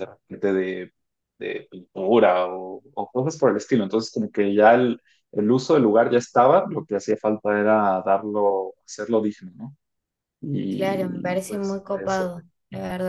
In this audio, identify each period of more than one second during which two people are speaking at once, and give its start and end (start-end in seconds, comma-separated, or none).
10.7-12.3